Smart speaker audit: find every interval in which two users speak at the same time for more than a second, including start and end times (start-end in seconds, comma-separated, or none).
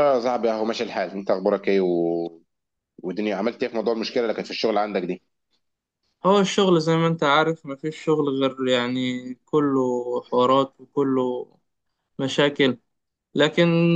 none